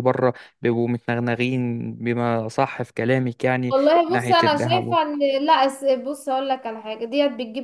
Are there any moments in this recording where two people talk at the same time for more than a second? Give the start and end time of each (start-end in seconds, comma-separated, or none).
3.7-5.0